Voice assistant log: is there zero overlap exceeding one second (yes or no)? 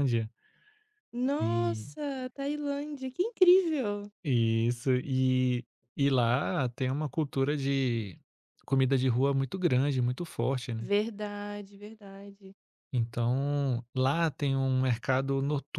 yes